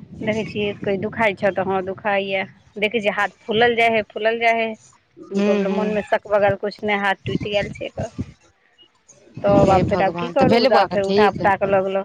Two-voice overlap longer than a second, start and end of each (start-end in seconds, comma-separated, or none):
9.5-11.4